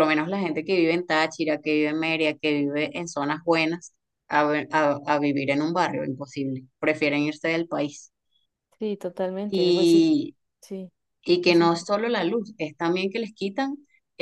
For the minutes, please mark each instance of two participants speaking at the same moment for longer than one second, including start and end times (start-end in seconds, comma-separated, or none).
none